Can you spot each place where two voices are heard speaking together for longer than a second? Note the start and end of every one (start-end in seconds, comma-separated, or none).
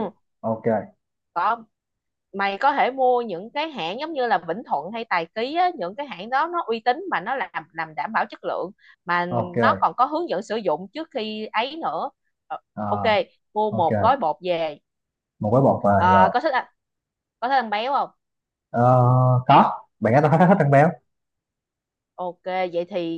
none